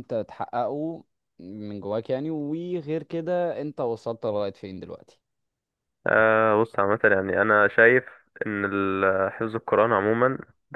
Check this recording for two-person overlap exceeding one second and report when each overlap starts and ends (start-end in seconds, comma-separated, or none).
none